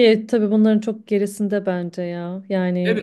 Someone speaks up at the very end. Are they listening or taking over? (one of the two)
taking over